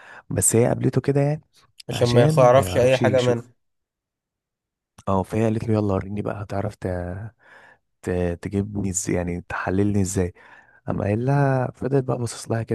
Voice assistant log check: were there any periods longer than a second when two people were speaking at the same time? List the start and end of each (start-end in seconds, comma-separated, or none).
1.9-3.5